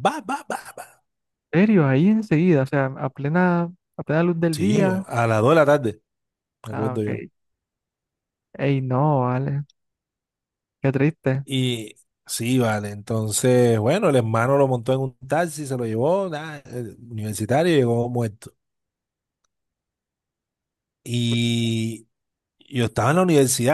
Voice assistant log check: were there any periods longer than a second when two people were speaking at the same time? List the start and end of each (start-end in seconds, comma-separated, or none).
none